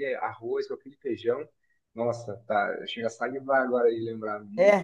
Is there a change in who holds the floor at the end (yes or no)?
yes